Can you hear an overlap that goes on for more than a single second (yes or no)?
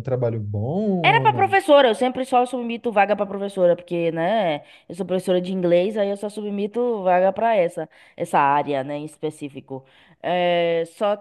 no